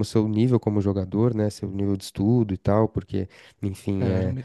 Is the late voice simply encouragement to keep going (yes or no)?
no